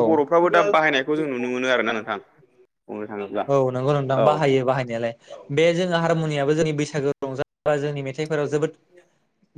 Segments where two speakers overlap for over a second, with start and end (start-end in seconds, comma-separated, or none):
none